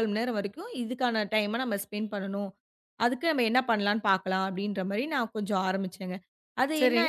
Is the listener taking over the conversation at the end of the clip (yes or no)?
yes